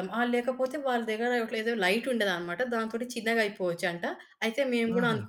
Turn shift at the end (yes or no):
no